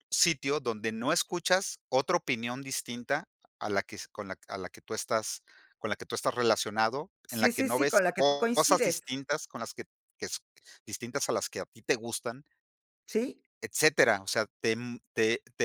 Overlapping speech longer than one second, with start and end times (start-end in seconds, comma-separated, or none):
7.3-9.0